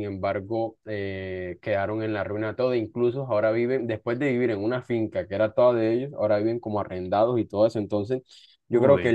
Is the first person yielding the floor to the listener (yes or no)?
no